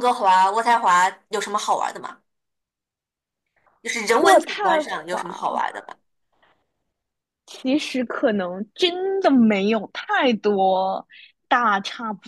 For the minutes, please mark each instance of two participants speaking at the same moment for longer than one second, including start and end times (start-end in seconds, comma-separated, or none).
4.2-5.6